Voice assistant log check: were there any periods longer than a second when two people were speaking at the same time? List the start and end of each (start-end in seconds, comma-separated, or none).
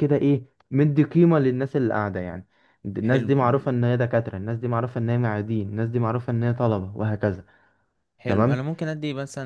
none